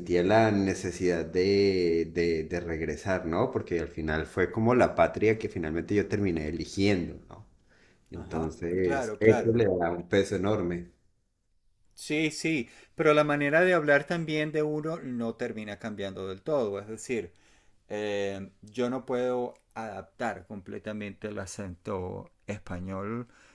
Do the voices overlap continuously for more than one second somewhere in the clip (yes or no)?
yes